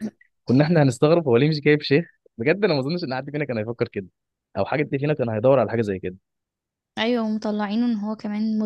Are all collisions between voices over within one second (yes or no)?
yes